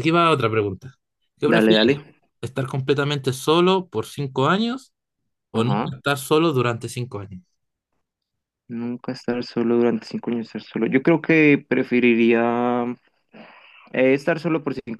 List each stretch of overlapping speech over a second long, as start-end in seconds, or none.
none